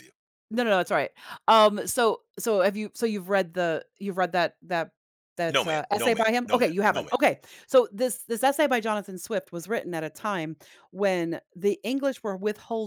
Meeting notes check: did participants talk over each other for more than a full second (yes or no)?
yes